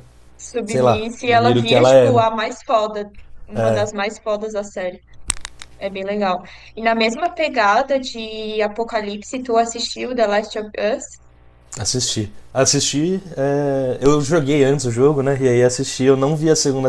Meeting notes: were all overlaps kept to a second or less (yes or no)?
no